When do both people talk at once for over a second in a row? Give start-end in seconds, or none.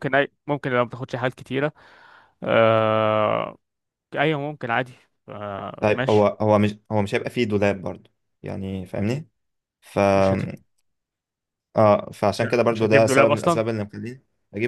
12.3-13.6